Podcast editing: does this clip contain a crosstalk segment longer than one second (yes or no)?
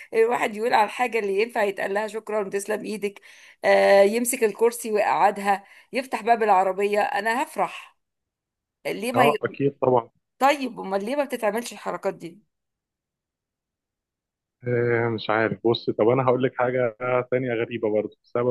no